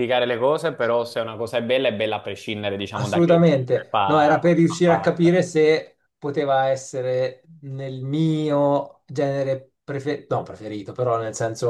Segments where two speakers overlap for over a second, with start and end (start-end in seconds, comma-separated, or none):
2.9-5.3